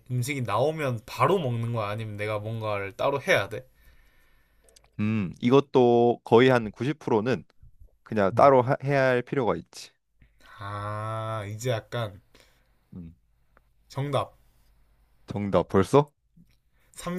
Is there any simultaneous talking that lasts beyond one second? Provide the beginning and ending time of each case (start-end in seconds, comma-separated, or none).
none